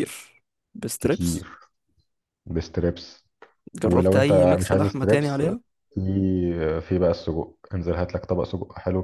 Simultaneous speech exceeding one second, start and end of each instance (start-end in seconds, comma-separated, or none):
3.8-5.4